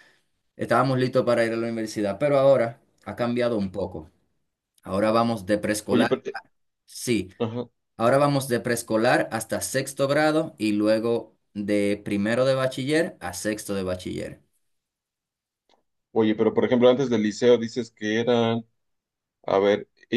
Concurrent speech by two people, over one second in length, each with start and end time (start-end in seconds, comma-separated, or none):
none